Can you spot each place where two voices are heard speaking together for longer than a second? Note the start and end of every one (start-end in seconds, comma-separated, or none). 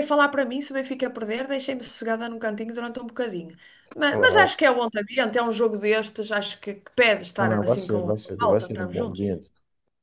7.4-9.3